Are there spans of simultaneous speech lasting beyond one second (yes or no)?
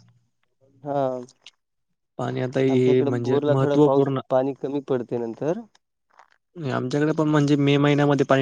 yes